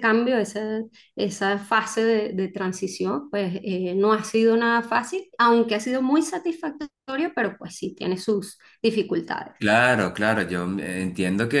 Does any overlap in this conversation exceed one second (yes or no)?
no